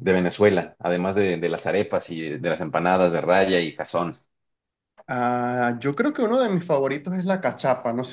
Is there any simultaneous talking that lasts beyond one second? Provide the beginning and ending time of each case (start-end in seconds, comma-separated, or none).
none